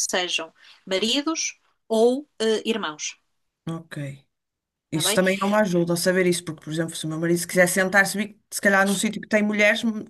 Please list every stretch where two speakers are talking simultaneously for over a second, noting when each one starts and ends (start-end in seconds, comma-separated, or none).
none